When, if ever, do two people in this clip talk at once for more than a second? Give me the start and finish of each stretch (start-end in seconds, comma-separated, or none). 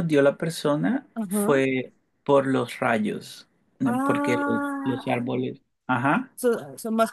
3.9-5.2